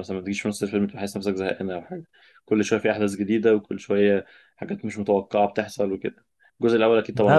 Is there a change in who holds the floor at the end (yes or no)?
yes